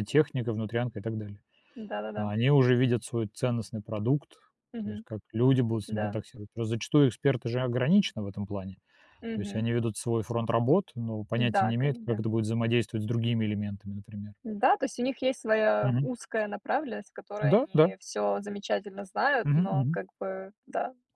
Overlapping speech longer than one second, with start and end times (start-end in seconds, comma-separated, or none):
none